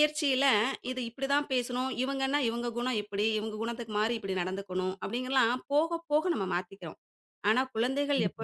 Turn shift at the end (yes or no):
no